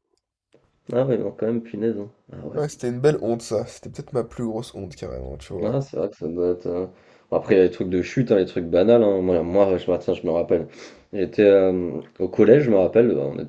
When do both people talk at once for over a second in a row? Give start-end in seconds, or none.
none